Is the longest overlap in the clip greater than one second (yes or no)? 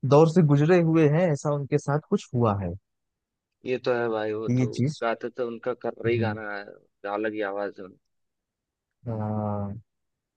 no